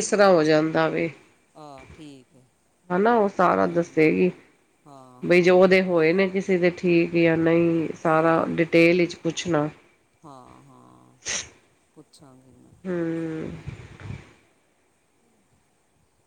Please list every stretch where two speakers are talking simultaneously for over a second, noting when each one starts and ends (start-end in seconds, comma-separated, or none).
none